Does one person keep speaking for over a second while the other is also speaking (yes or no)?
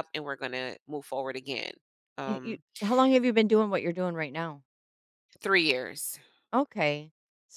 no